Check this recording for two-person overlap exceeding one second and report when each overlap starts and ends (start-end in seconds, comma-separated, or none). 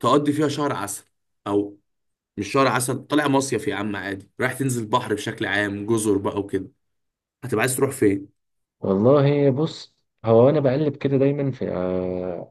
none